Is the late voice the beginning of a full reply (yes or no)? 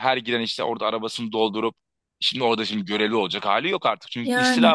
no